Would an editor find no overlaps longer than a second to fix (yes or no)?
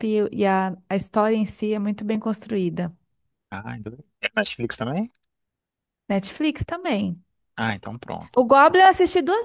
yes